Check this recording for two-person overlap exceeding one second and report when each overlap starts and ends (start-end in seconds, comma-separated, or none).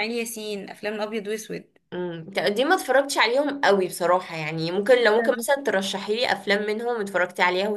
none